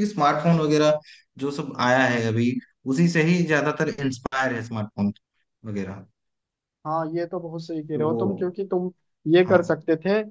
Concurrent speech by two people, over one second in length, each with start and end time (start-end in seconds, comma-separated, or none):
none